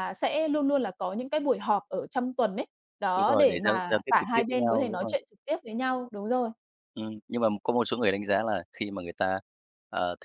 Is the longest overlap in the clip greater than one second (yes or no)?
yes